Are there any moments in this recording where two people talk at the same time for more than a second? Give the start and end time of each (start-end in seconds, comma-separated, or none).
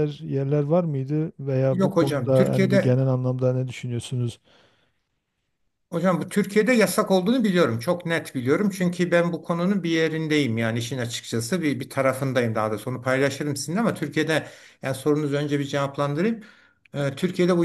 1.7-3.0